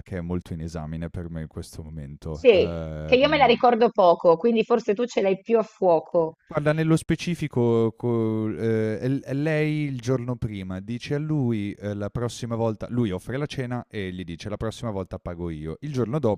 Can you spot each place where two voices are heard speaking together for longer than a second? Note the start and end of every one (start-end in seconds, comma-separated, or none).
2.3-3.6